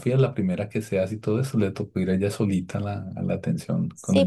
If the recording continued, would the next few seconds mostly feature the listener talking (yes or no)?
yes